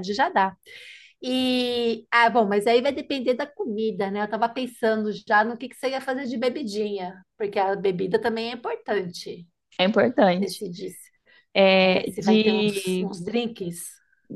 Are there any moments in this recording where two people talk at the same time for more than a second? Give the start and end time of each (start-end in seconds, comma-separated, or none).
11.8-13.1